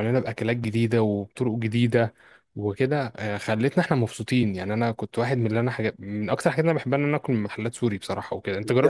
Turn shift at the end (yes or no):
yes